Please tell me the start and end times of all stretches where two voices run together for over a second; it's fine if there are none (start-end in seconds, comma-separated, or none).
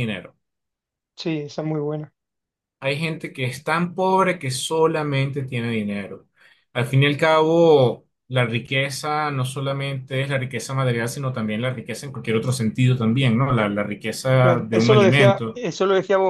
14.4-15.6